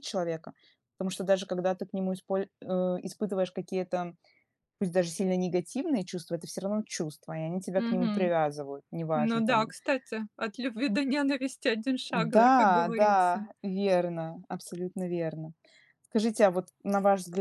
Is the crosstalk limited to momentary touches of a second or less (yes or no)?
no